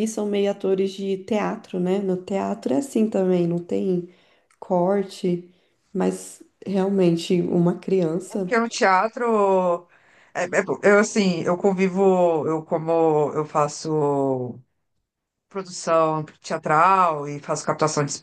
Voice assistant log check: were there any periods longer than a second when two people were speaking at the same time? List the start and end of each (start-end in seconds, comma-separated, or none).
none